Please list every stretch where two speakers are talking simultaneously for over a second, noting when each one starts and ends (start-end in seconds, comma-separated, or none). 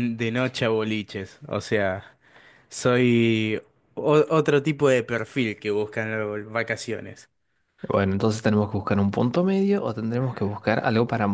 none